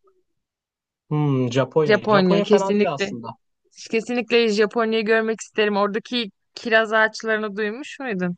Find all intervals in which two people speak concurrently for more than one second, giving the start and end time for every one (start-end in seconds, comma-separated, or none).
1.9-3.1